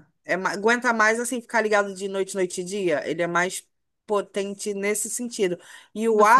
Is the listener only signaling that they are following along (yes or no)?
yes